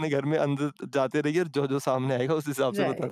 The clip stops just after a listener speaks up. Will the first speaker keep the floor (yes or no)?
no